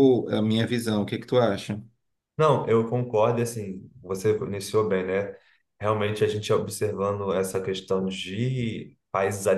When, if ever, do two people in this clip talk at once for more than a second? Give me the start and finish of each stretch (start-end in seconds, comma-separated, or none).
none